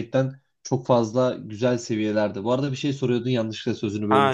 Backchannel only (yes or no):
no